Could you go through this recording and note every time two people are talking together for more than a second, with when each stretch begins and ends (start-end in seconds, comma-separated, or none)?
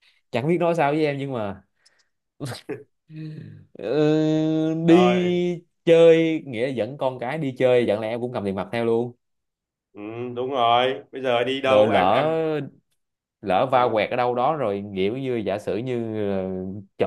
none